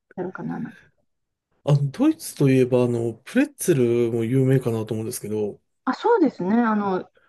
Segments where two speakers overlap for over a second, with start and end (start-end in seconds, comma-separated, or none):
none